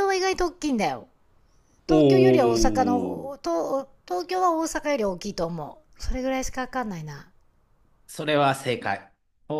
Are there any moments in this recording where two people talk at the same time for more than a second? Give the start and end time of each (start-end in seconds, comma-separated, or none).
1.9-3.2